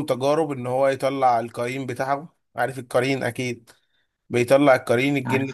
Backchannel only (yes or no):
yes